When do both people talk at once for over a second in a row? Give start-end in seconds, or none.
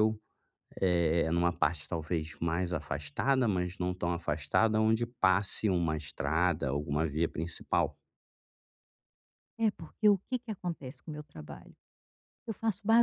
none